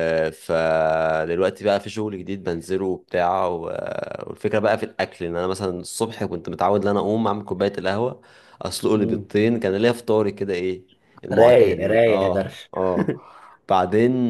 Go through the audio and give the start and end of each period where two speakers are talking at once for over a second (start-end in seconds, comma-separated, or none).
11.3-12.7